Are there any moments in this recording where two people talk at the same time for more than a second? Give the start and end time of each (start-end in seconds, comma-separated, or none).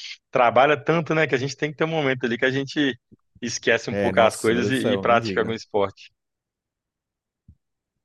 3.9-5.6